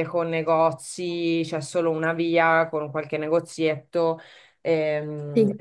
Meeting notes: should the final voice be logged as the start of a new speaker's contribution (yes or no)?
no